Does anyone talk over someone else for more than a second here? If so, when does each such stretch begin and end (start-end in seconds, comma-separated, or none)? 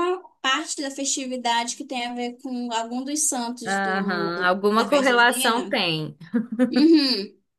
3.6-5.8